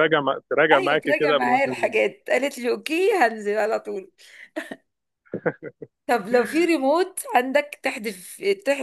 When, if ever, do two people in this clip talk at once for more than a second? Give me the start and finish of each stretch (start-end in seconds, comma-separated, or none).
0.7-2.0